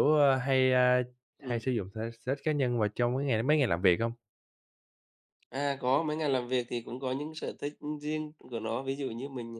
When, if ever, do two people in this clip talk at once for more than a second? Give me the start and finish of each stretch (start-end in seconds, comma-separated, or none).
none